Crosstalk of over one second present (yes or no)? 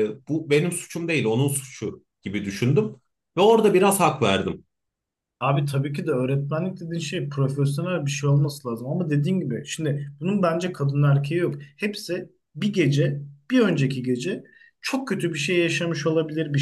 no